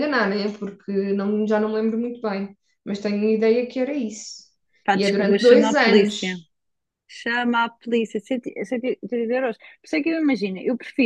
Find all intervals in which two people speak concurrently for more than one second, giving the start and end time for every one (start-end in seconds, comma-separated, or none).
4.9-6.4